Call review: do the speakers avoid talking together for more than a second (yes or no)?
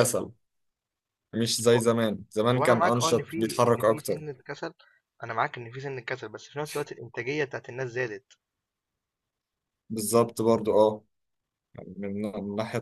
no